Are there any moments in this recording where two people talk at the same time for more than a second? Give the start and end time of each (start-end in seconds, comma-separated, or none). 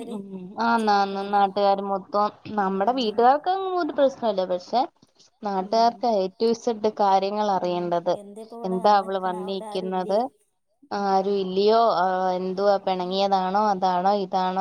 8.7-10.2